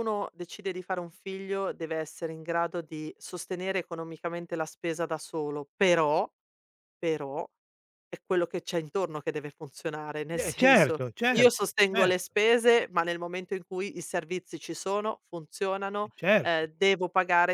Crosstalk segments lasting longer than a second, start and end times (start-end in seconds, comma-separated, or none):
10.4-12.3